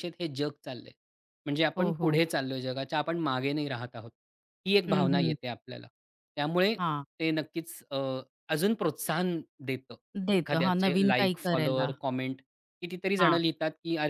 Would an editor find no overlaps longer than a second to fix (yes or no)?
no